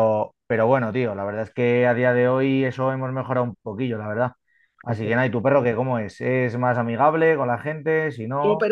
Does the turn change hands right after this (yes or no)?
yes